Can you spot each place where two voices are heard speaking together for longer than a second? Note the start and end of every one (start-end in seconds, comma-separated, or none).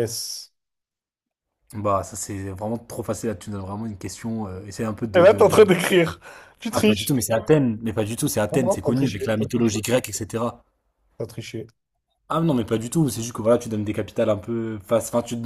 8.5-9.8